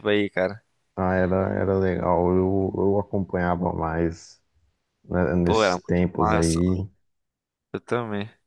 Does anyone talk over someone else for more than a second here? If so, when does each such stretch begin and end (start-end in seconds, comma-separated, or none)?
5.4-6.8